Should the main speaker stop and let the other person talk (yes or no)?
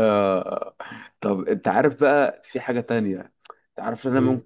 no